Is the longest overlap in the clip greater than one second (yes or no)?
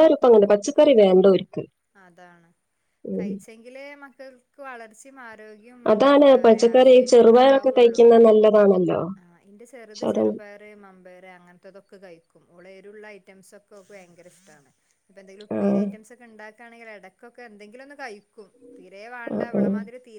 yes